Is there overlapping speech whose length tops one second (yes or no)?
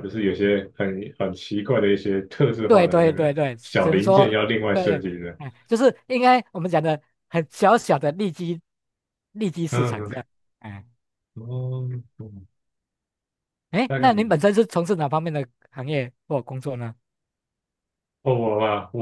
yes